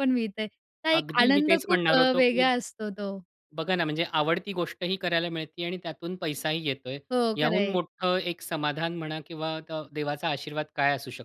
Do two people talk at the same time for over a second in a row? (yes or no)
yes